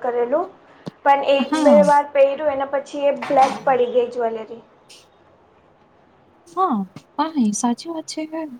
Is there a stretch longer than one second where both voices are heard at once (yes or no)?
no